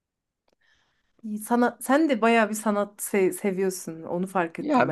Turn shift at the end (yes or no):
yes